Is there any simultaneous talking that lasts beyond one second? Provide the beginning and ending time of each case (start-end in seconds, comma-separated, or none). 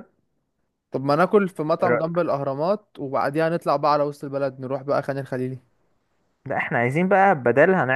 none